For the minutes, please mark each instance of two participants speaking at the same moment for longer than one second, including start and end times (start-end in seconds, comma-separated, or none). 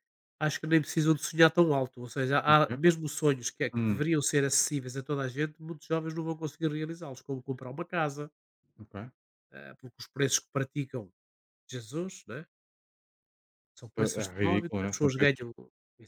14.0-15.4